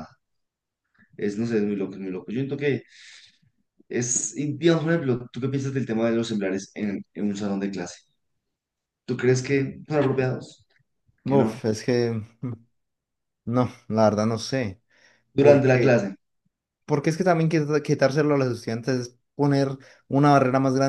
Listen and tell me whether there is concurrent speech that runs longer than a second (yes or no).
no